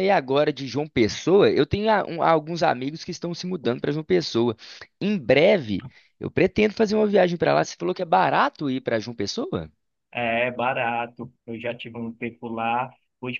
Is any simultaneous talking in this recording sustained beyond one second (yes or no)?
no